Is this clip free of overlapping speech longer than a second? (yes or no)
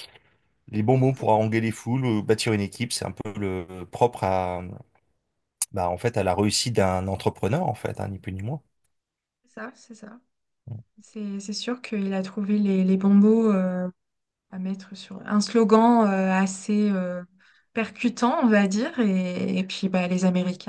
yes